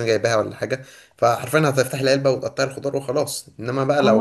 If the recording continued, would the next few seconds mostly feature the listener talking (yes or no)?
yes